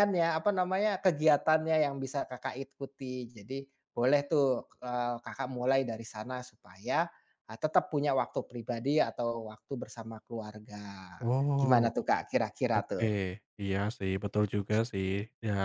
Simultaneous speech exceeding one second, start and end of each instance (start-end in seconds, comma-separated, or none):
none